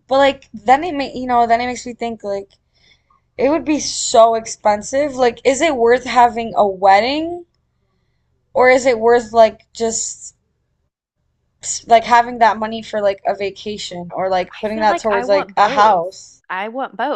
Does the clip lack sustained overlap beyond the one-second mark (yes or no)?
no